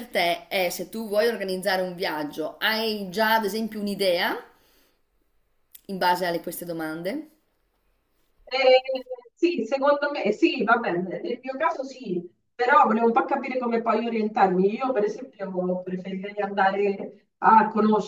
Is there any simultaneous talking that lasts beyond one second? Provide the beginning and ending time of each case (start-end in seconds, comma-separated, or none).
none